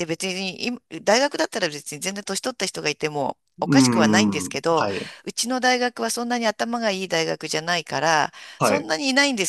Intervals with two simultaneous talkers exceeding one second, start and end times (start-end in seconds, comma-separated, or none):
3.6-4.9